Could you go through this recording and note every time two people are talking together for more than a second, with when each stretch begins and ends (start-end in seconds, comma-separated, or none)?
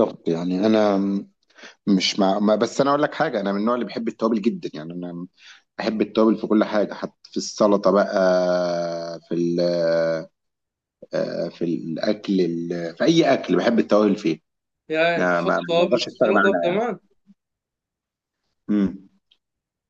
15.2-16.8